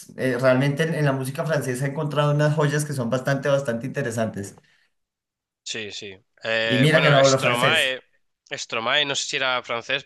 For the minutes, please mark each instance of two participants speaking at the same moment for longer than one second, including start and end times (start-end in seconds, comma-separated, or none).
6.6-8.0